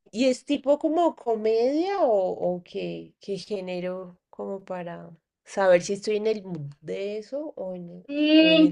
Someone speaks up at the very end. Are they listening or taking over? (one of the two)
taking over